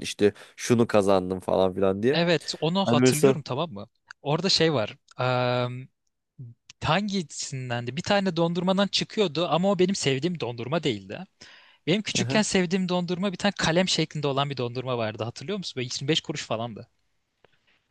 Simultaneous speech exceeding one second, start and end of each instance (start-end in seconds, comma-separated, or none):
none